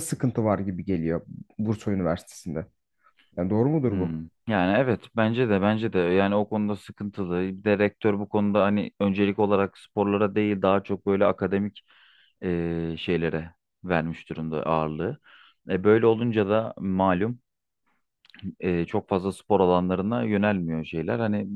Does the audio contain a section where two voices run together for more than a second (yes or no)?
no